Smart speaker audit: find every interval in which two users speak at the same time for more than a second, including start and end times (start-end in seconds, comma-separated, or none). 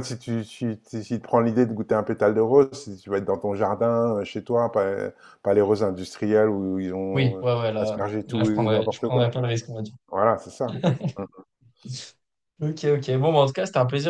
7.1-9.3